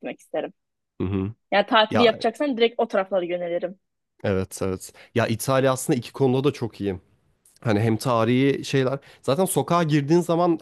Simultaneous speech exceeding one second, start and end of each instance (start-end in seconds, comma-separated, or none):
none